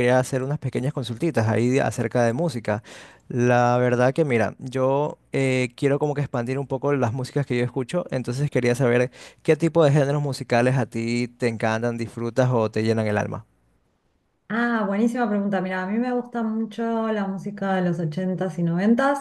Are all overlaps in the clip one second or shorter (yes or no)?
yes